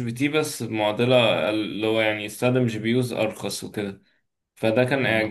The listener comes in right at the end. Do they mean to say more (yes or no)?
no